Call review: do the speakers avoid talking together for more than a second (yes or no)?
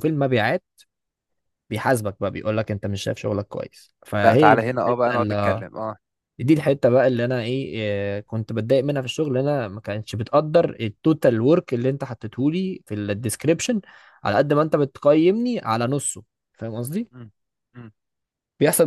no